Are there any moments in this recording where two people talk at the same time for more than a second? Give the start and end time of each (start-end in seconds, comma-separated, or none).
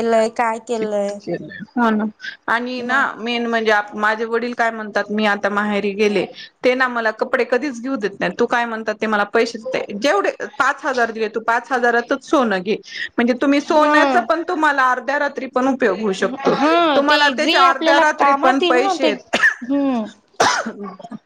16.9-19.1